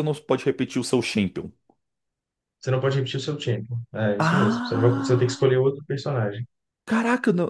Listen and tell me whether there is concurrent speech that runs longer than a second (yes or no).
yes